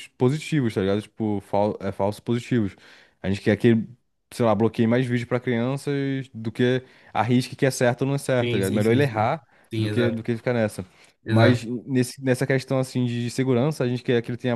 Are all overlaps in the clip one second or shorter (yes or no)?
no